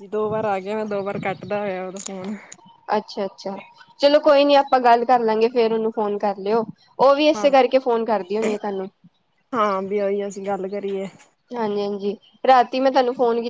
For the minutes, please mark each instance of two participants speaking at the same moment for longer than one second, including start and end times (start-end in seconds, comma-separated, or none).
none